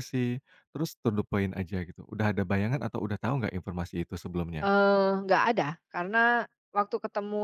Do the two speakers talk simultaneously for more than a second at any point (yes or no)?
no